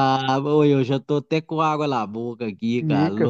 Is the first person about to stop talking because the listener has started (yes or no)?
yes